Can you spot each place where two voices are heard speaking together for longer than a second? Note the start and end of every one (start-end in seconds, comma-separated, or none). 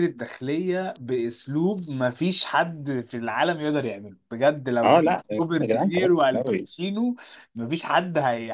4.8-6.7